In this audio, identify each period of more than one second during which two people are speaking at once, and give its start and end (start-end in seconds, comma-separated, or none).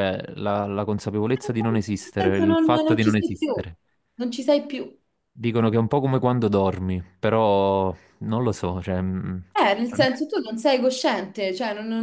1.4-3.7